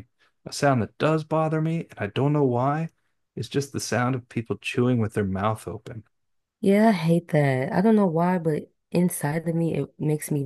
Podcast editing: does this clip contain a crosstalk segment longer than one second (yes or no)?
no